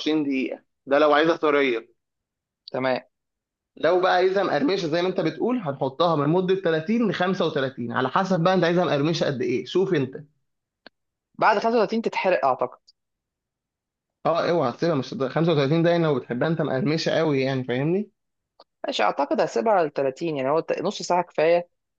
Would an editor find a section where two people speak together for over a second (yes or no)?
no